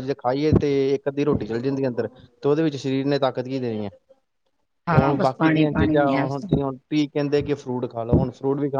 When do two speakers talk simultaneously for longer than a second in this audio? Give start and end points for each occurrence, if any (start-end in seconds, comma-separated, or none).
4.9-6.7